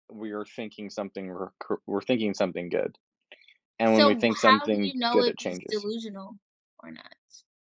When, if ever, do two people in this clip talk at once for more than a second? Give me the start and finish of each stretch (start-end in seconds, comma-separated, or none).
3.9-5.8